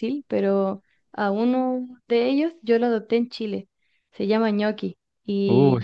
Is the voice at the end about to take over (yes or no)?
no